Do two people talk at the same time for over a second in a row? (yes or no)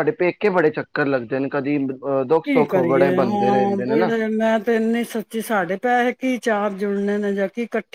yes